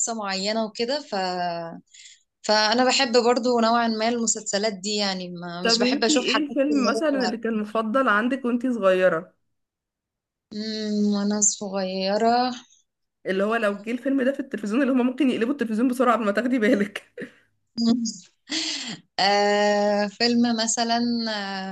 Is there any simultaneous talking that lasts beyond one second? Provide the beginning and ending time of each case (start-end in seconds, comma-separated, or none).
5.6-7.0